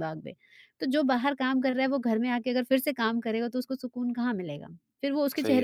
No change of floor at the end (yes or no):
no